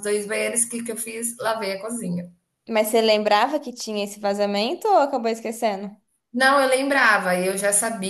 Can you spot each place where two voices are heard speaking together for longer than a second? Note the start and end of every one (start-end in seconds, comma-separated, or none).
none